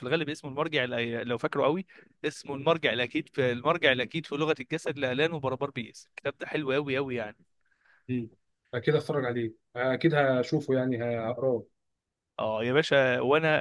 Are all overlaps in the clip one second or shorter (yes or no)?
yes